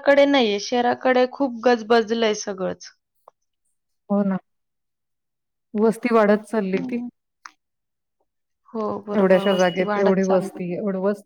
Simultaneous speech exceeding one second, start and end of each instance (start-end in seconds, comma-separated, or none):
9.2-10.6